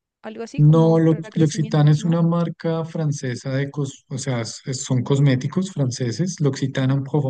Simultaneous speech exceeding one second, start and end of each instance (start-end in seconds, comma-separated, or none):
0.6-2.2